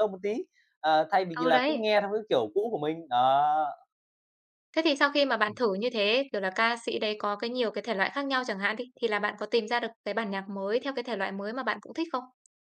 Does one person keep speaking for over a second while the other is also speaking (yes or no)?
no